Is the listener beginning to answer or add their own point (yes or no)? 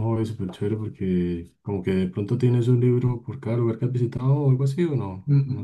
yes